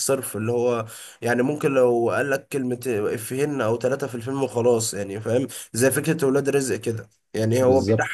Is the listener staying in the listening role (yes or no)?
yes